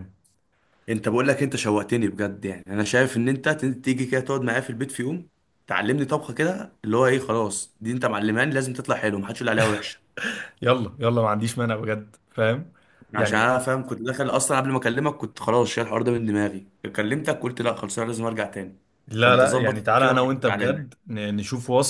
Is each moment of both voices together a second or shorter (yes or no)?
no